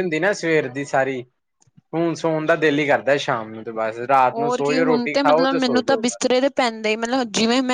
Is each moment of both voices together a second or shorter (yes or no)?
no